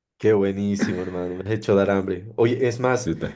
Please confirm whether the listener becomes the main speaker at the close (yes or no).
no